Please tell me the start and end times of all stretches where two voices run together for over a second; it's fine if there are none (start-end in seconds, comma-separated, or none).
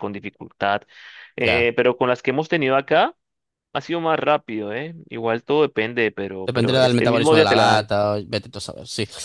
6.4-7.9